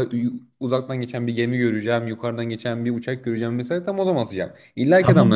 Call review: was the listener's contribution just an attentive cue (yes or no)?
no